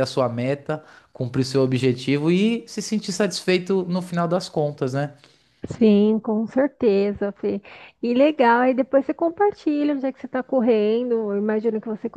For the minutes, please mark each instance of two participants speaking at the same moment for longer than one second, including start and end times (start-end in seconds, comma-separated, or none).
none